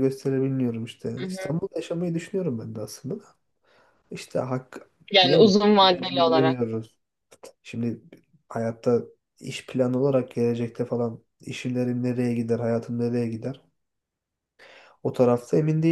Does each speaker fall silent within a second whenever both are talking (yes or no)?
no